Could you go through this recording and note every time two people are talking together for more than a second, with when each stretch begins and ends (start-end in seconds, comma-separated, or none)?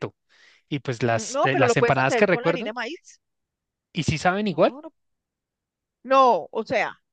1.0-2.7